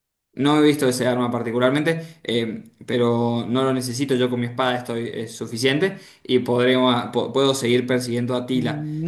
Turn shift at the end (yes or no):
yes